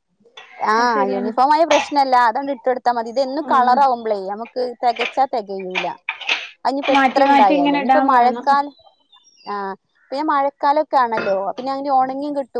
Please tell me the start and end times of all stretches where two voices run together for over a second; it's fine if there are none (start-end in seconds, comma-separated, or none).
7.0-8.5